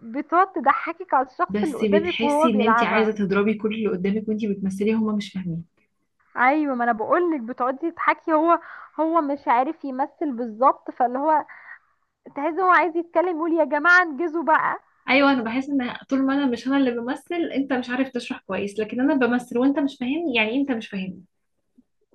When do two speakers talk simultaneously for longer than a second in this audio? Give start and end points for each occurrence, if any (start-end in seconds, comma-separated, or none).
1.5-3.1